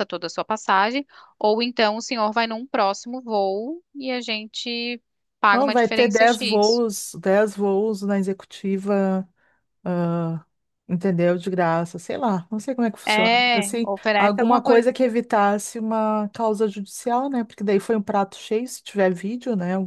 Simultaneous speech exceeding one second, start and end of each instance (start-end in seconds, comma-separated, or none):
5.5-6.8, 13.1-14.9